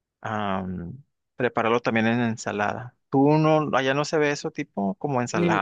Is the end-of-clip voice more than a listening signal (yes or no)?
yes